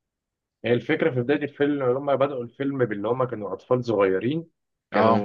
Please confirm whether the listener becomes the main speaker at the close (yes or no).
no